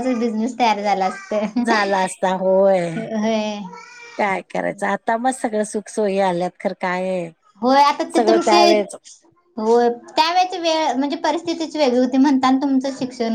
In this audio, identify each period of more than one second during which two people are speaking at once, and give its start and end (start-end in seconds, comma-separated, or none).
none